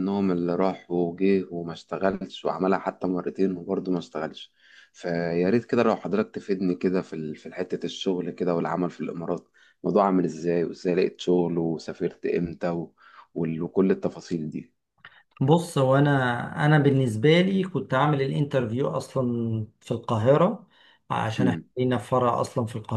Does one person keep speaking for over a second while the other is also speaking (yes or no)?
no